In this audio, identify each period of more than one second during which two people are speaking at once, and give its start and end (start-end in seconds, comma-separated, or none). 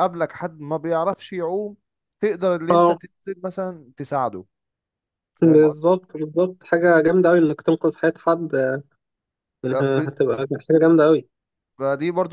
none